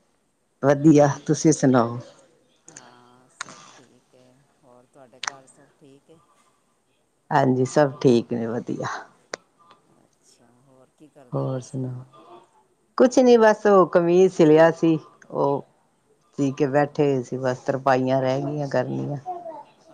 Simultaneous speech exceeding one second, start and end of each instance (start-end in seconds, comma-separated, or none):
none